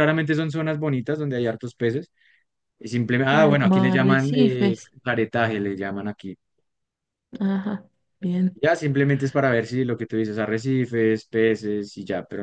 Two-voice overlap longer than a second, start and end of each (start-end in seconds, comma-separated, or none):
3.2-4.9